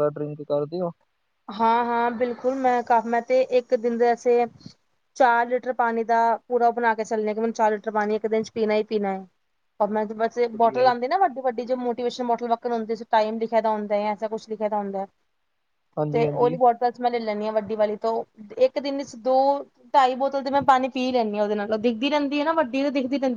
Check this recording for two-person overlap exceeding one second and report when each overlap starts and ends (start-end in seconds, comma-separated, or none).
none